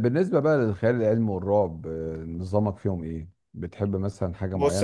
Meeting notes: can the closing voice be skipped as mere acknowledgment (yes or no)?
no